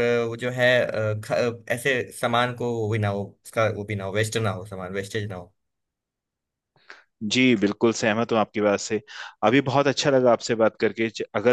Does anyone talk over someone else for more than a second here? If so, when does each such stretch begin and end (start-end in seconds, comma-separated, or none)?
none